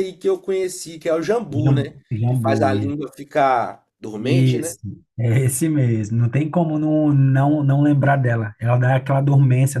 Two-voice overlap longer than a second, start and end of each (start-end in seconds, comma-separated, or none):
1.5-3.0